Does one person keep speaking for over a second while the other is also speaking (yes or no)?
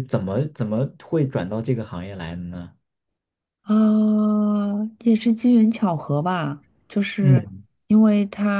no